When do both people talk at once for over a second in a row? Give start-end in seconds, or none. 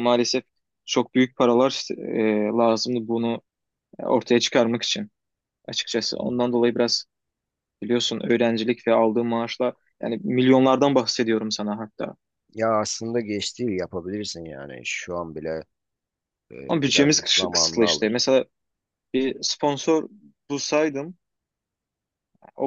16.7-18.2